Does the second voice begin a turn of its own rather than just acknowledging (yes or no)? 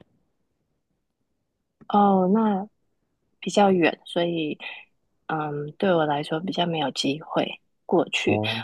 no